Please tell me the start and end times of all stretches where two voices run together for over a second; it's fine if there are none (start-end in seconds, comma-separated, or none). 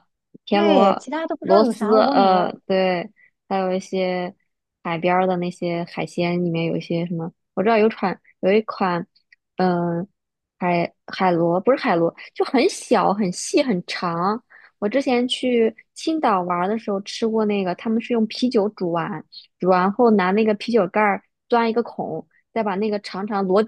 0.5-2.6